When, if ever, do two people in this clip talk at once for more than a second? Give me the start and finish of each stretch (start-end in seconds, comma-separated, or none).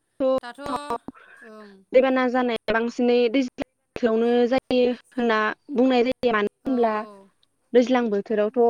none